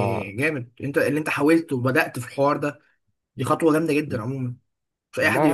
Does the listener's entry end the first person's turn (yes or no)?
yes